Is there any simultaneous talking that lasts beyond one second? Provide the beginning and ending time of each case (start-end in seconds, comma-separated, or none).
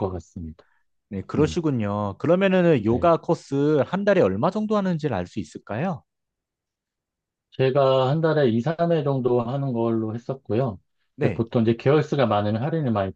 none